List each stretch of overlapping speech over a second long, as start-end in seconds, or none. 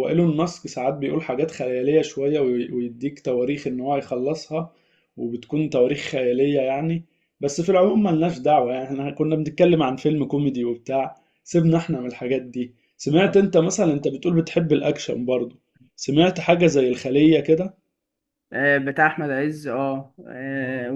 none